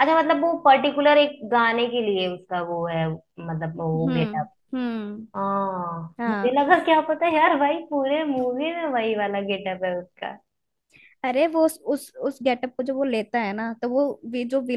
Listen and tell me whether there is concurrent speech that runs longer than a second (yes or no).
no